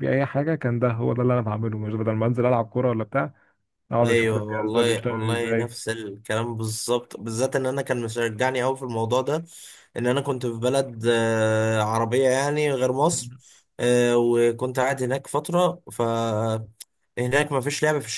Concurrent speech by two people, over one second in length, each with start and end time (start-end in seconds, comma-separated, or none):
4.0-5.8